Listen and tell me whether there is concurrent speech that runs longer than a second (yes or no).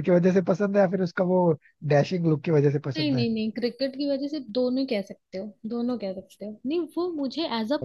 no